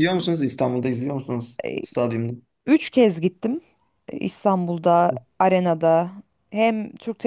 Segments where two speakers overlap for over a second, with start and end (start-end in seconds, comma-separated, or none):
none